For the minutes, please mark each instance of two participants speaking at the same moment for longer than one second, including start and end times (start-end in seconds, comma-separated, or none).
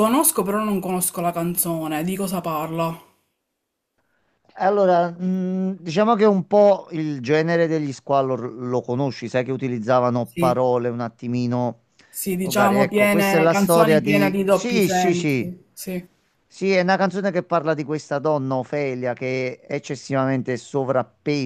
12.4-15.5